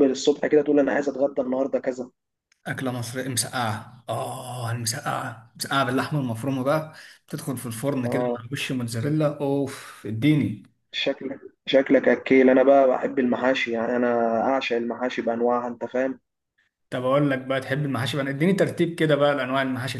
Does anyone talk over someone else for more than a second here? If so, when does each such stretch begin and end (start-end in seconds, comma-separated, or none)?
none